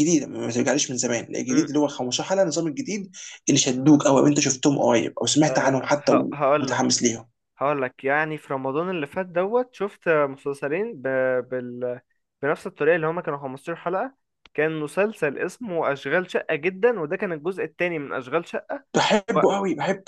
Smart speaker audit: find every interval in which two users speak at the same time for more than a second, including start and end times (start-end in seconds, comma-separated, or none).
none